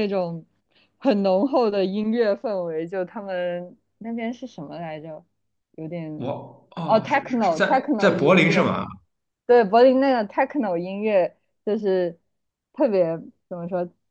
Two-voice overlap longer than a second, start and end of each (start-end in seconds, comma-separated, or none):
6.8-8.7